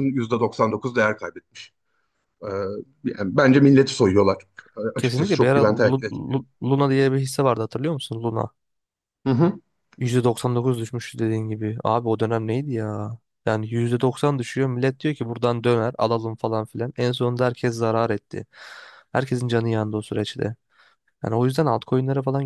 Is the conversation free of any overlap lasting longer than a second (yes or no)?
no